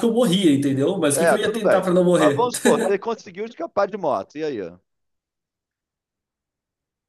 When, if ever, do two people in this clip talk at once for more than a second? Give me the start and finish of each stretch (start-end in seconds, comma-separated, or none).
1.1-2.5